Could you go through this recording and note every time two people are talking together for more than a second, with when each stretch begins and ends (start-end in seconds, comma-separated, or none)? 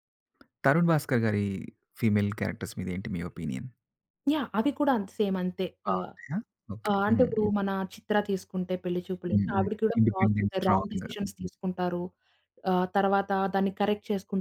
9.3-11.5